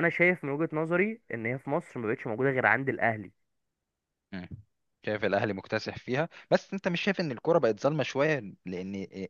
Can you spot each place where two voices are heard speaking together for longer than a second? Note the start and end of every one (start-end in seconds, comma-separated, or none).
none